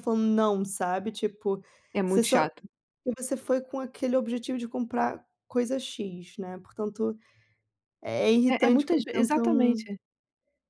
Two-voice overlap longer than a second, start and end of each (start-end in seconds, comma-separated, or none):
8.5-9.9